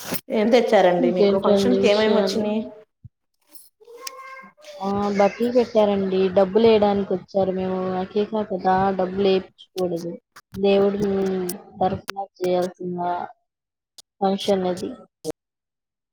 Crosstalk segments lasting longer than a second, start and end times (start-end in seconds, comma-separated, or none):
1.0-2.5